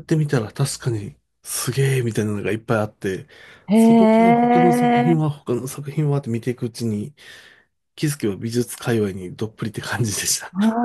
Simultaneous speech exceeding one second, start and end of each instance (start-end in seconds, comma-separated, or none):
3.7-5.1